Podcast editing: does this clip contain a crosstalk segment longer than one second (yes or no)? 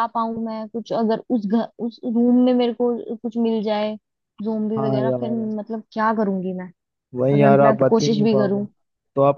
yes